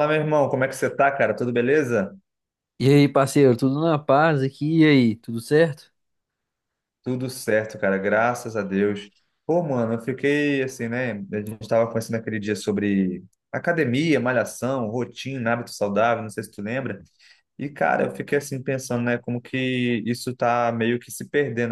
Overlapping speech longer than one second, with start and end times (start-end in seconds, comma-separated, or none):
none